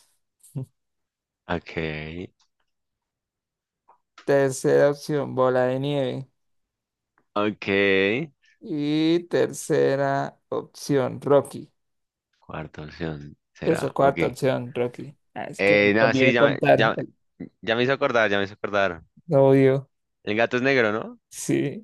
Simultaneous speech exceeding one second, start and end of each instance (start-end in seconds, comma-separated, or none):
15.6-16.9